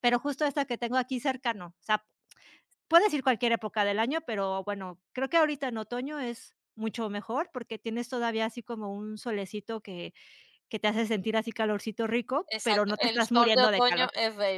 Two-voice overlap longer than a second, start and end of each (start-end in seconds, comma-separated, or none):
12.5-14.1